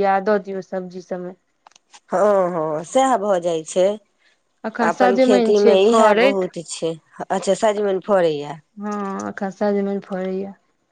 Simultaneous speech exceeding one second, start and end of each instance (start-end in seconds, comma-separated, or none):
4.7-6.4